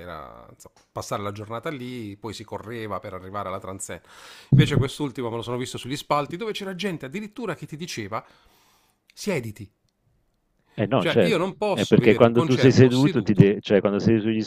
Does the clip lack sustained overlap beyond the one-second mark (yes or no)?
no